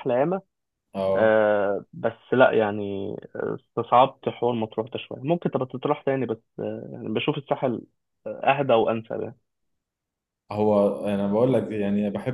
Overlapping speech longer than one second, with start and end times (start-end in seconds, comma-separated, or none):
none